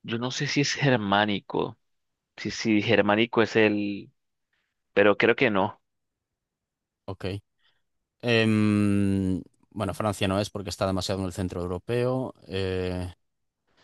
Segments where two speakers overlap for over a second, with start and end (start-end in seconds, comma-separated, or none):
none